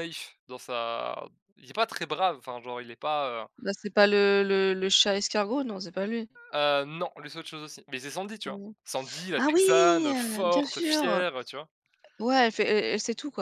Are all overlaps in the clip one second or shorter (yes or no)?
no